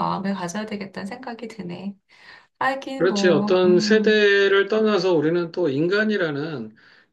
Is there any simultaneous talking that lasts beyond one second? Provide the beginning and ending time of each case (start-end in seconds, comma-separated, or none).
3.0-4.2